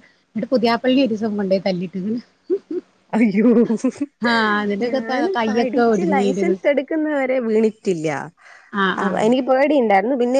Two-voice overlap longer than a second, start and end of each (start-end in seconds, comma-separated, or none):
4.9-6.6